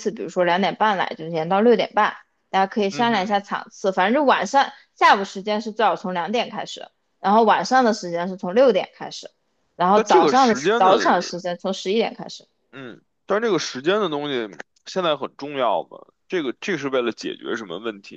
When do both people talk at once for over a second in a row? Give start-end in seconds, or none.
9.9-11.3